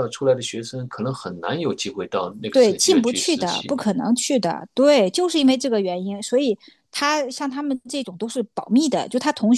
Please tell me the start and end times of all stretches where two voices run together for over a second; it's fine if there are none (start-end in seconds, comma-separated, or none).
2.5-3.8